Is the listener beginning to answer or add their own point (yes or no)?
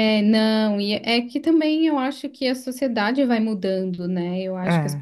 no